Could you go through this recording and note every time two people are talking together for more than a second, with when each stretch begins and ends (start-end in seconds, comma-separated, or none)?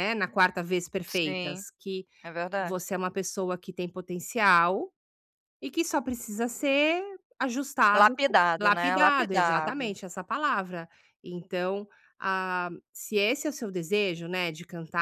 7.9-10.0